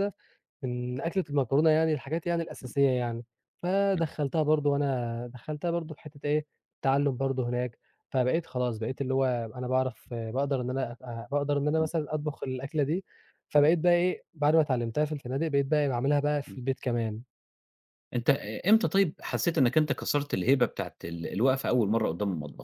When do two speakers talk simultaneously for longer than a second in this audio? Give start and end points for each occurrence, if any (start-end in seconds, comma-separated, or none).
none